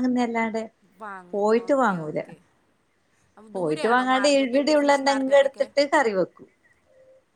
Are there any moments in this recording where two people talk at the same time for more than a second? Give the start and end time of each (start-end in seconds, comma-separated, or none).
3.6-5.7